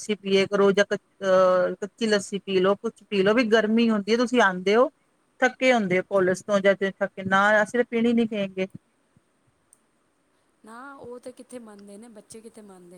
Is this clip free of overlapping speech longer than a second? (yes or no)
yes